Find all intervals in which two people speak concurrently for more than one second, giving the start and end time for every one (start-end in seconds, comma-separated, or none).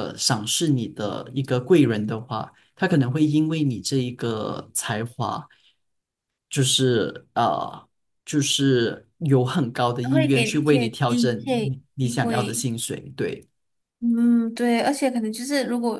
10.0-12.7